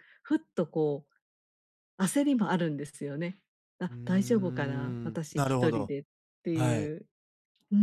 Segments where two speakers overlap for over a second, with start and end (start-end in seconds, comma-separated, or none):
3.9-5.9